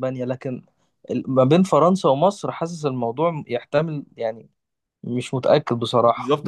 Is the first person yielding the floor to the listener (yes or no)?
yes